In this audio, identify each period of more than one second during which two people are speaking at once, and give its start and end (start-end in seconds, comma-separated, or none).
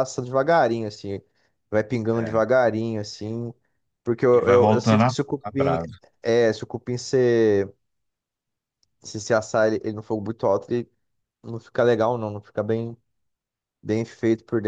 4.3-5.8